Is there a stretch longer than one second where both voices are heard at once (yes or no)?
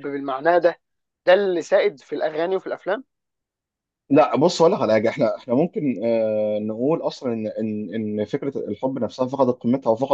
no